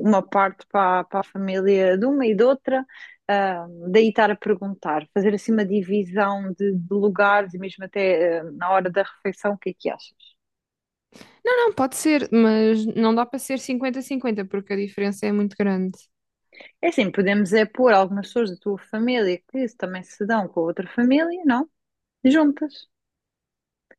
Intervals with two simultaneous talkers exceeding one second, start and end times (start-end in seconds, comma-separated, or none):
none